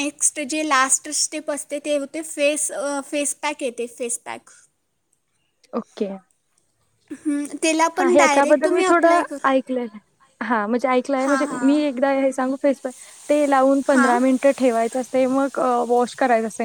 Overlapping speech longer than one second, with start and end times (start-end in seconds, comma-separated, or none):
none